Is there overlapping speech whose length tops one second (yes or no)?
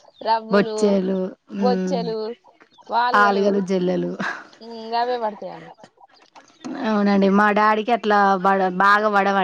no